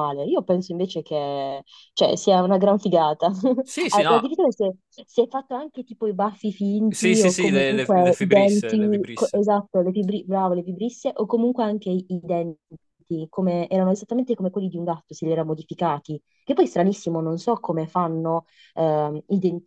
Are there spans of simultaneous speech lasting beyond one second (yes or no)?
yes